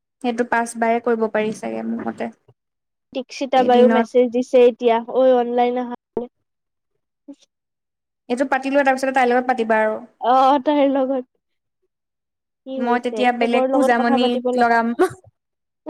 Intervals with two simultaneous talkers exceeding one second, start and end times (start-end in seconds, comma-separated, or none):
12.9-14.8